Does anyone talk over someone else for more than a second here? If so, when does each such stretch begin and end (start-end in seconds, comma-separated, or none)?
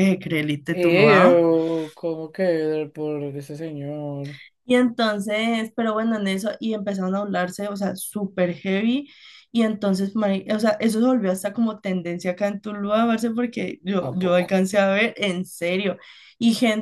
none